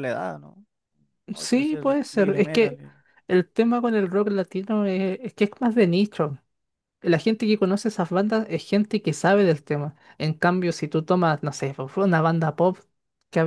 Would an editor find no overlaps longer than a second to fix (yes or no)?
no